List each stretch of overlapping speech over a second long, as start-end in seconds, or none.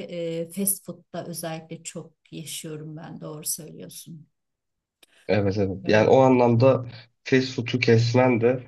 none